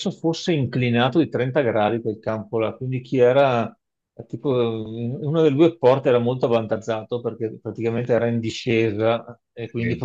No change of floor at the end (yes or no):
yes